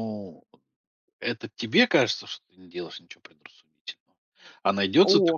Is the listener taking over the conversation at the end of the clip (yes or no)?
no